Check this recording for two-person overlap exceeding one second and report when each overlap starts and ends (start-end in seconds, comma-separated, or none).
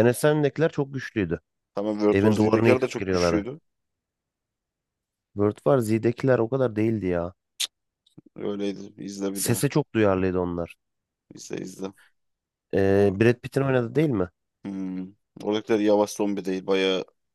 2.1-3.5